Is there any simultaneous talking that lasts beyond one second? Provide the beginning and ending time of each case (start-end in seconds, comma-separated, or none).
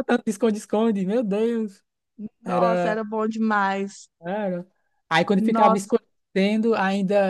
none